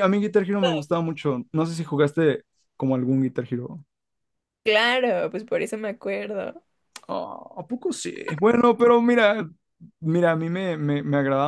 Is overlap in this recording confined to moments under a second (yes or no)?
yes